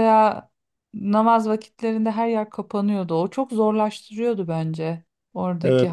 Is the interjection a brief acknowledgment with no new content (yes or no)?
no